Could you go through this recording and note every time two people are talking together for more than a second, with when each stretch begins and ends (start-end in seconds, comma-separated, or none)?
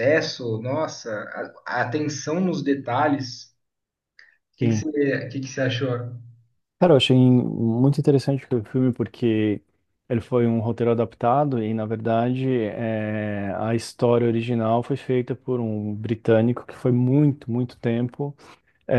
none